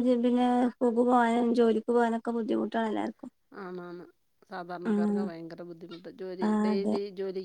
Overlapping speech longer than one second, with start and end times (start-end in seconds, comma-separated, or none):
none